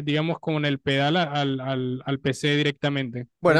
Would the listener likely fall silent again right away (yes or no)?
no